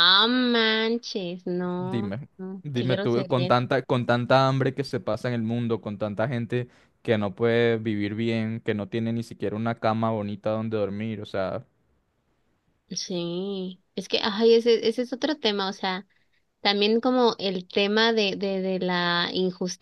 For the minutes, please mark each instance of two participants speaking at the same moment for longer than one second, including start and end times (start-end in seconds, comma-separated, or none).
1.8-3.7